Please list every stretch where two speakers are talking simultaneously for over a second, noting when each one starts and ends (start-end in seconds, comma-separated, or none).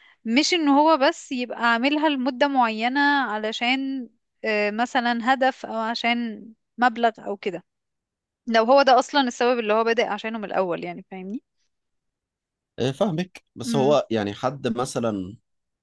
none